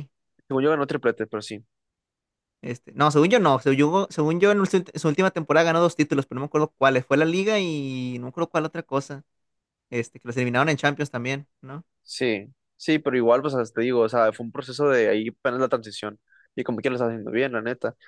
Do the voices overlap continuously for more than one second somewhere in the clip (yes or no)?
no